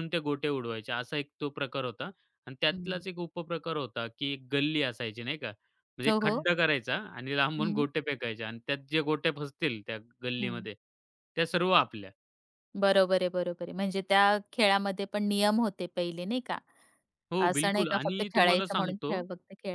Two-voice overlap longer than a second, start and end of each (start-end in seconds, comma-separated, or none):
17.5-19.1